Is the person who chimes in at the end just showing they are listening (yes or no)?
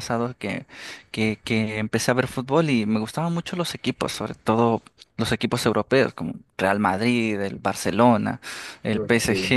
yes